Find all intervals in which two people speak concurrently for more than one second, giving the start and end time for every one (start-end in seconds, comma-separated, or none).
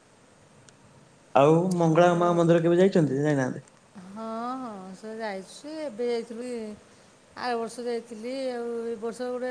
none